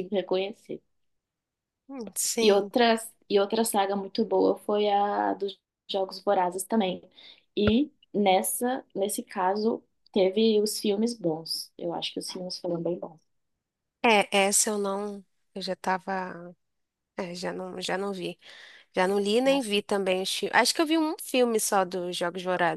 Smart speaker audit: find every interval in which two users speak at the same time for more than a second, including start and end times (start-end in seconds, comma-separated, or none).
none